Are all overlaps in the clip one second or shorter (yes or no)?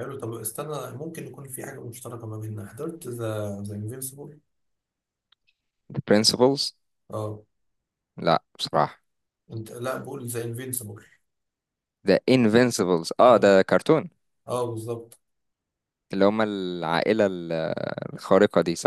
yes